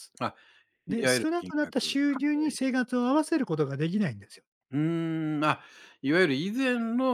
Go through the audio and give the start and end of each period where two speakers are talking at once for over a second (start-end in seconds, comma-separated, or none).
0.9-2.5